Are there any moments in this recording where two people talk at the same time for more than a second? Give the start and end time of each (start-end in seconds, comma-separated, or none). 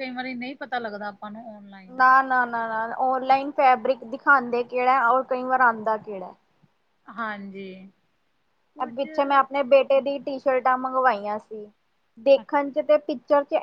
none